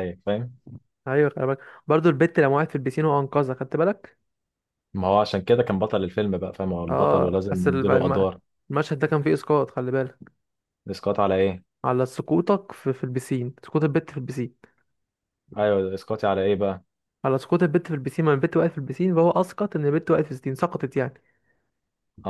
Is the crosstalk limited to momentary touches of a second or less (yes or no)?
no